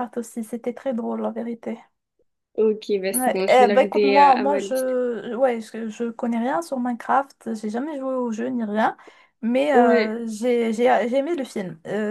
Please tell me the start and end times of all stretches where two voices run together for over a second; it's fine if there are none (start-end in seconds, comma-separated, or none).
3.1-5.0